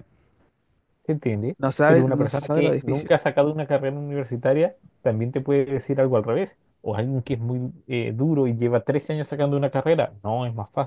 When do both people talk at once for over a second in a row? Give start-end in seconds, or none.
1.6-3.1